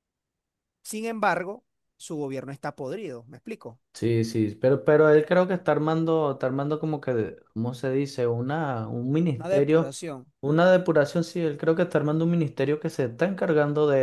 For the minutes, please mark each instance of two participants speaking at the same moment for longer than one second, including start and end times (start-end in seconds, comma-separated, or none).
none